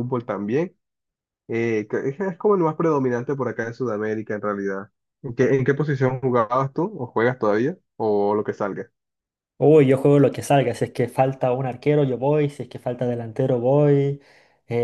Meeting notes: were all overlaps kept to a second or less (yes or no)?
yes